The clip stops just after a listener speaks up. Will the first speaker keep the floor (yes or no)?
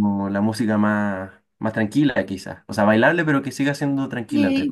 no